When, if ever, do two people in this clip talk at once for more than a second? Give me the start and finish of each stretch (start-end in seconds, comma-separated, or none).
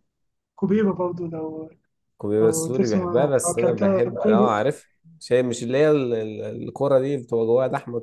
2.4-4.5